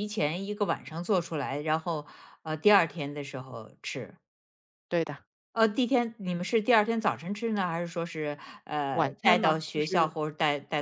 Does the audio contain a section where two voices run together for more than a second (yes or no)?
yes